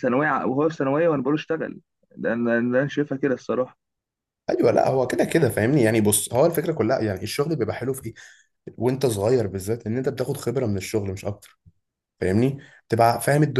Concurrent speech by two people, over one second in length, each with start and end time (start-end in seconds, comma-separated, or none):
none